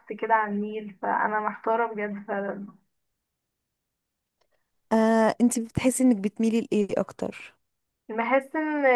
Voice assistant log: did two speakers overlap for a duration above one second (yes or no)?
no